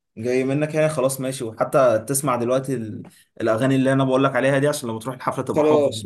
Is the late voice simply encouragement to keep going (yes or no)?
no